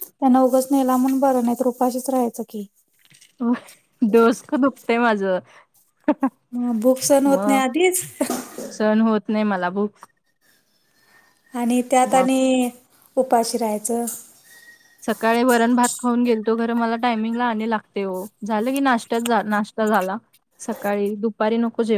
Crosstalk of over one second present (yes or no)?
no